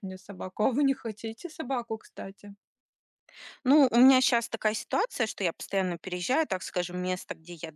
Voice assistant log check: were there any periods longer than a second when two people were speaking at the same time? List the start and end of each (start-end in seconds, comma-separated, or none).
none